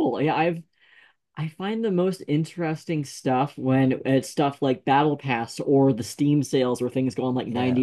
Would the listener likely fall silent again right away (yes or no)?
yes